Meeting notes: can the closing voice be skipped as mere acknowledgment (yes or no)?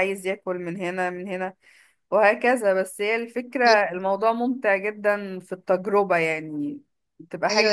no